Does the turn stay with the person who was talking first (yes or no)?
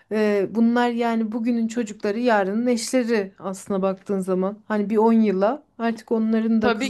yes